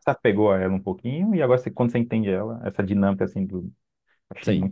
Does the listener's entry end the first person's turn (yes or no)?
yes